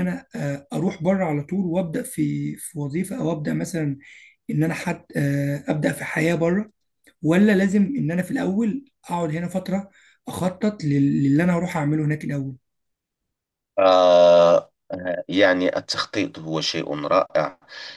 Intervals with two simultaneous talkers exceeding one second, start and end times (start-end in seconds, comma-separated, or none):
none